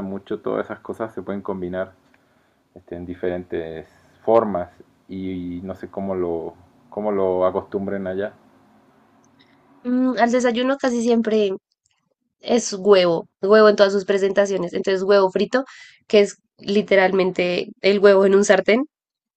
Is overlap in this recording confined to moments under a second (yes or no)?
yes